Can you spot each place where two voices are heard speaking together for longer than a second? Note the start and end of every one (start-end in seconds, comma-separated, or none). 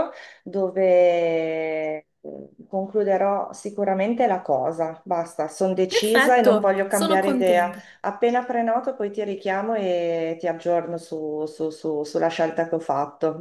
5.9-7.8